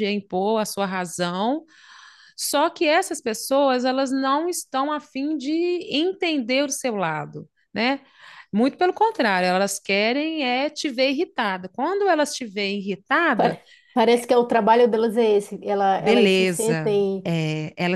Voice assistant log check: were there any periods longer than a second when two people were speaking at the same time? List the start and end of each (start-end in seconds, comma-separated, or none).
16.0-17.3